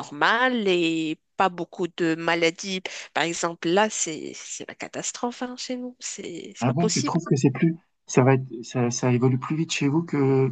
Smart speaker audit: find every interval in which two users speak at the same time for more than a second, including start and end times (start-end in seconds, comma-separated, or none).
none